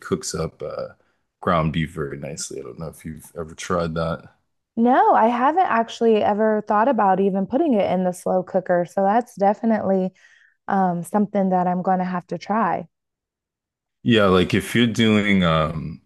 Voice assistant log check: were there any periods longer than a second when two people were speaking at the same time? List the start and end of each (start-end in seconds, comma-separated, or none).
none